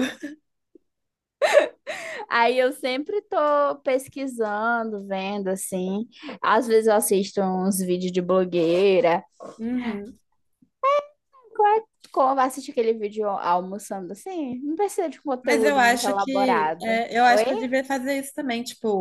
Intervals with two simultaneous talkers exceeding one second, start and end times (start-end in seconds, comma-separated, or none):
15.4-17.4